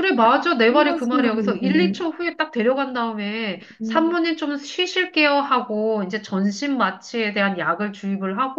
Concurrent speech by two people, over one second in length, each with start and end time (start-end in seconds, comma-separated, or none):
0.7-1.9